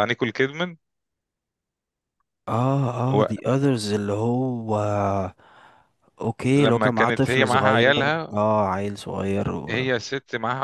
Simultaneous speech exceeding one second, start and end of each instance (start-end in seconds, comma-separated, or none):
6.6-8.4